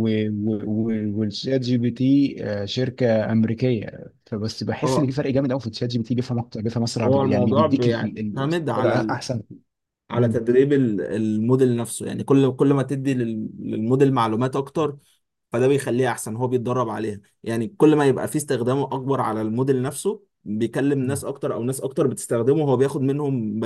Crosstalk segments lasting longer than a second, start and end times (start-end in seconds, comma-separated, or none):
7.0-9.2